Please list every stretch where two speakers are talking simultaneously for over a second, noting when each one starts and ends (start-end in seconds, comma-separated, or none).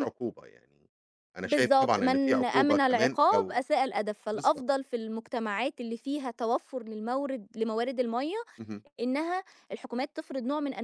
1.4-3.6